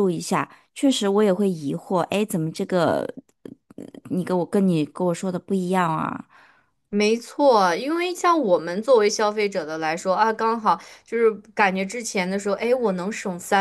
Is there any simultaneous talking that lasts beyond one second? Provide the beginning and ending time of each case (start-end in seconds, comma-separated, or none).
none